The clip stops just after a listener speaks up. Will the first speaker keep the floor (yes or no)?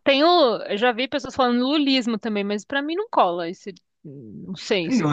no